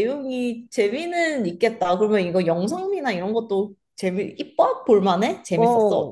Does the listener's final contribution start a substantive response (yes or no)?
yes